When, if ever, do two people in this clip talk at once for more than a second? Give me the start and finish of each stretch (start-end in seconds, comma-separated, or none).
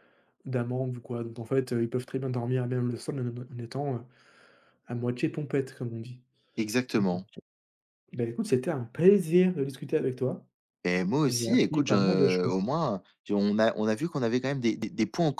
11.3-12.5